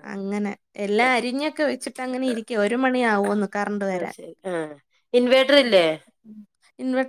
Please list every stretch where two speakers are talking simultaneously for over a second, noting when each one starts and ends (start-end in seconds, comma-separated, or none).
1.1-2.4